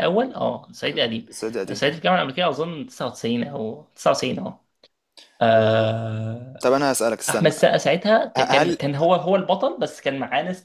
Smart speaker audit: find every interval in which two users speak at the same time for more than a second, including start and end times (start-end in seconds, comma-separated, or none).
none